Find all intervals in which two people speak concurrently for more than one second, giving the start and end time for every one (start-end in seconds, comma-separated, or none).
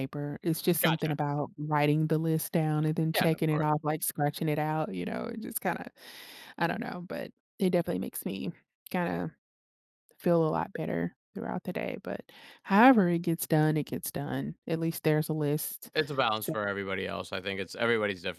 none